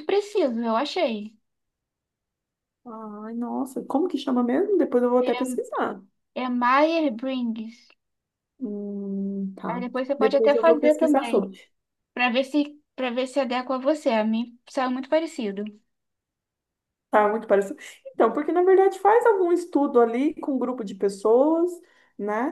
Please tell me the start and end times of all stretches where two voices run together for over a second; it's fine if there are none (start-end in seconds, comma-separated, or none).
9.7-11.5